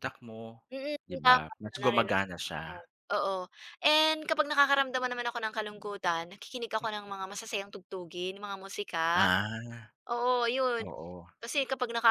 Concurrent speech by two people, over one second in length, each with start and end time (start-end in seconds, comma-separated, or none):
1.1-2.8